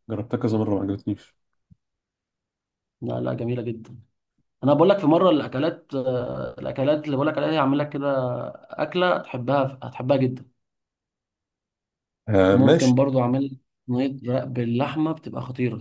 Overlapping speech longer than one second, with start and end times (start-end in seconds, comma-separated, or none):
none